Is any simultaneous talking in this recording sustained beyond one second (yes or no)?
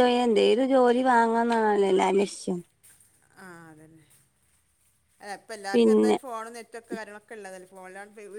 no